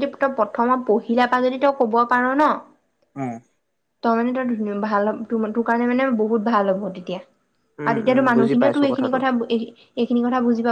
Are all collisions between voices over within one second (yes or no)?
no